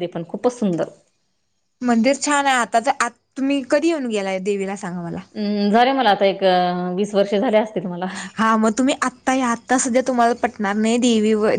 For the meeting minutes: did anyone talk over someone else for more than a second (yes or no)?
no